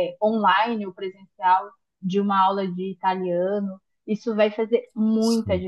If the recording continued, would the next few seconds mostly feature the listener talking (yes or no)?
no